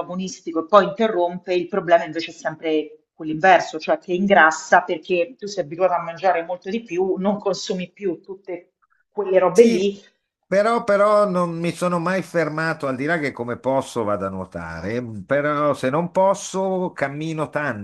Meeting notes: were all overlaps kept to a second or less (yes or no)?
yes